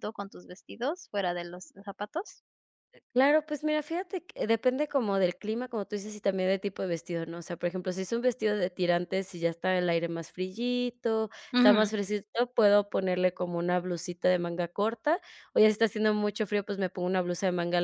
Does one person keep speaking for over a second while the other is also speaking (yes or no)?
no